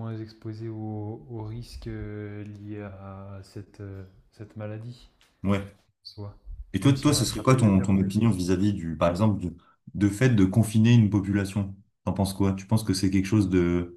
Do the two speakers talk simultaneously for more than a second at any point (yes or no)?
yes